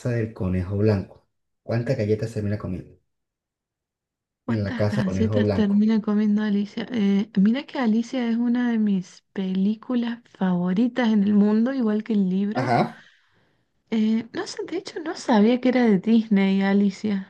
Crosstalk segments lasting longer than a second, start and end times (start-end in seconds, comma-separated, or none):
4.5-5.9